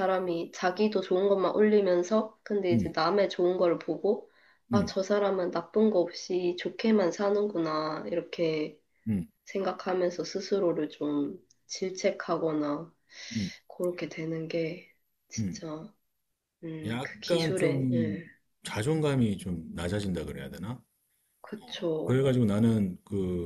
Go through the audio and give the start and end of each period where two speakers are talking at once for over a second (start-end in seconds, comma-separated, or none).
16.9-18.2